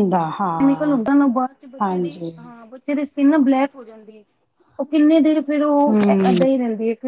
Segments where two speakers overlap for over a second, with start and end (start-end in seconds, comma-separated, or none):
none